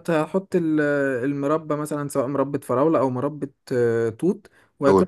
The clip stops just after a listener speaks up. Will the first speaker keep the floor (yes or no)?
yes